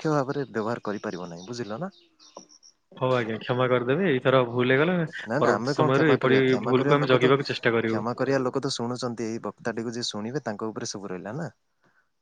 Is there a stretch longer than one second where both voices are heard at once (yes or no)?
yes